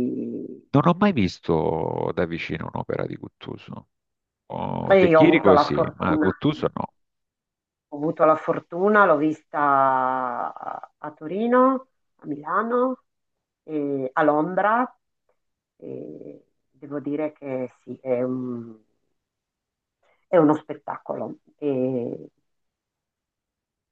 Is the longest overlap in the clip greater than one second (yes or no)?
yes